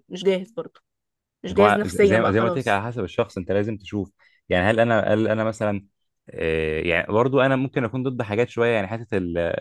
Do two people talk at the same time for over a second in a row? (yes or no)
yes